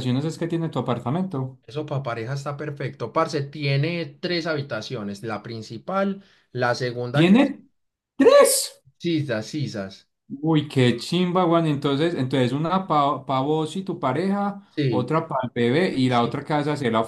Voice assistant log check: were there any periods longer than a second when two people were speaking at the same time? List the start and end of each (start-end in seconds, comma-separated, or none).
none